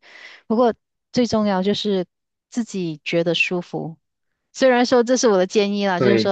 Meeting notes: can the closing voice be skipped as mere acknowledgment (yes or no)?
yes